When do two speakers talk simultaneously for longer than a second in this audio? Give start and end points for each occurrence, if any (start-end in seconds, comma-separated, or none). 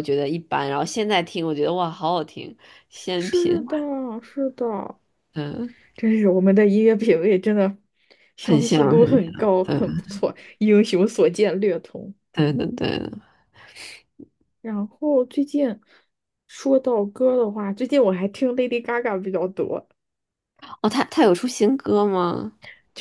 8.4-9.8